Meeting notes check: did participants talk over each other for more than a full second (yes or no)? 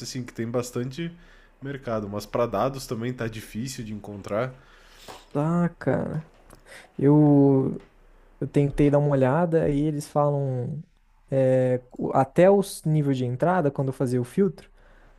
no